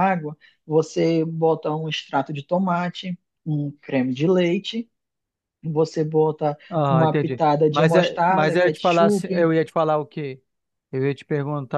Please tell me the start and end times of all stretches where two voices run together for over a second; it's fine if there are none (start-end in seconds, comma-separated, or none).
6.7-9.5